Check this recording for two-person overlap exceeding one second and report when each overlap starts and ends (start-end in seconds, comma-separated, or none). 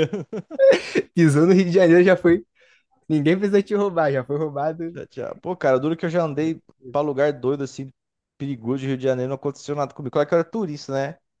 none